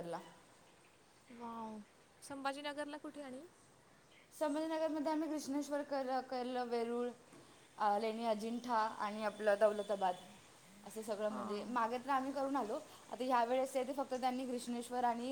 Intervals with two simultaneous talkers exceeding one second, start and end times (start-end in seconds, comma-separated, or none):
none